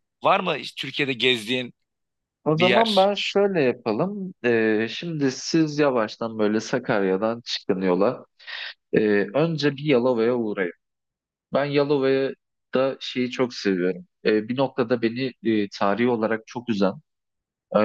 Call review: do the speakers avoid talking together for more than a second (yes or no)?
yes